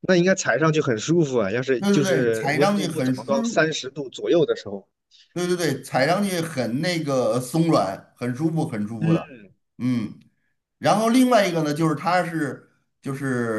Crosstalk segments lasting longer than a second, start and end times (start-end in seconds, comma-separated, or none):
1.8-3.6